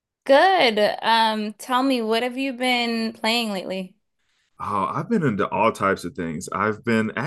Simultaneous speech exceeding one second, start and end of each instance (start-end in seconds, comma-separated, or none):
none